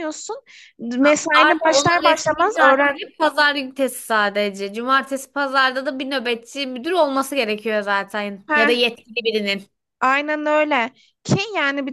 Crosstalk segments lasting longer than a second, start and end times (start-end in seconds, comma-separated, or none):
1.0-2.9